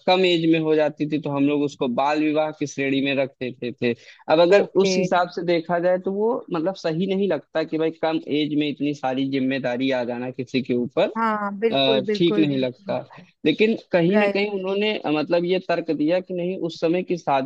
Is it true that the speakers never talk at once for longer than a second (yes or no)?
no